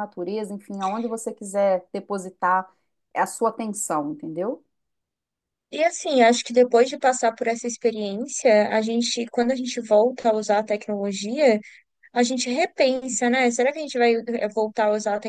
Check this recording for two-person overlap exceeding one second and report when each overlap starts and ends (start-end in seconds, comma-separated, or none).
none